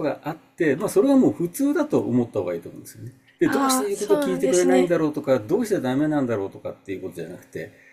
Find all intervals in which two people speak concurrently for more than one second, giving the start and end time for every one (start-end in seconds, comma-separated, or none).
3.4-4.9